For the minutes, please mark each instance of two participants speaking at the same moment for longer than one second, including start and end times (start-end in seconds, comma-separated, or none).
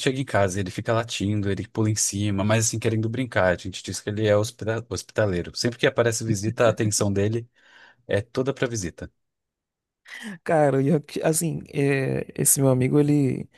none